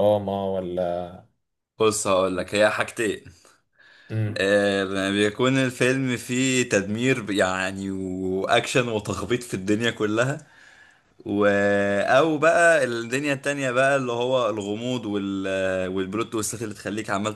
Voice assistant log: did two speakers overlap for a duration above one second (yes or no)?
no